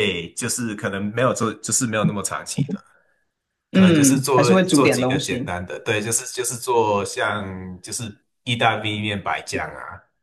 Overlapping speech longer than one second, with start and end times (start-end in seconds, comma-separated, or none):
3.7-5.5